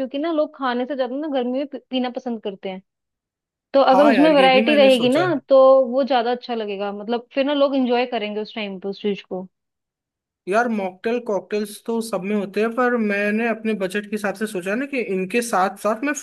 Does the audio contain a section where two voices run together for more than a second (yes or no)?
yes